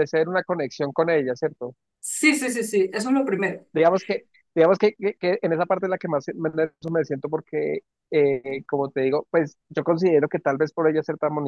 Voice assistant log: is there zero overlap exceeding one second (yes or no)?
yes